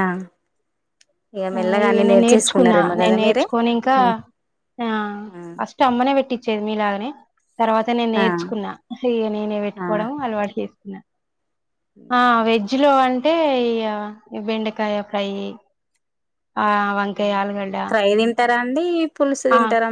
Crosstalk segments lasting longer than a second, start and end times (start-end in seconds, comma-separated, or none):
1.6-3.4